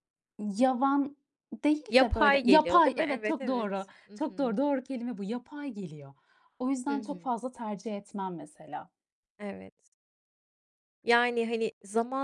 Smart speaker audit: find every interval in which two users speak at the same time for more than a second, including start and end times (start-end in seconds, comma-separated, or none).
1.9-4.6